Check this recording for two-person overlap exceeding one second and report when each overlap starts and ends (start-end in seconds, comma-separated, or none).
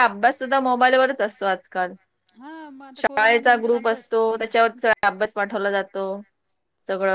3.0-4.5